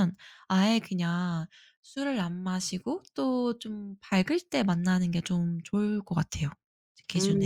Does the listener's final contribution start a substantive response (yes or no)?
yes